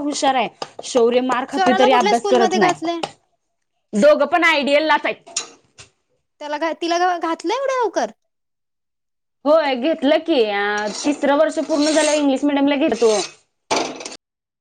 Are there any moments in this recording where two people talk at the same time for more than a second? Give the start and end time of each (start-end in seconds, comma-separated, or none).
1.5-3.0